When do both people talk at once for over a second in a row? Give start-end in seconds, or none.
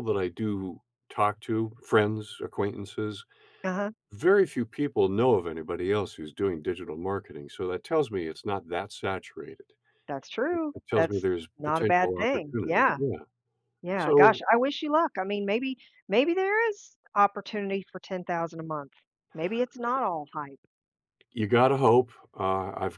10.5-13.0